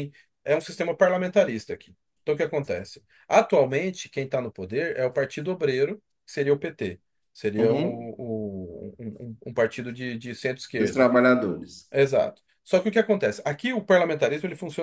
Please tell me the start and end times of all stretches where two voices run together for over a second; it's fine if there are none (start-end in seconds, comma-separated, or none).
none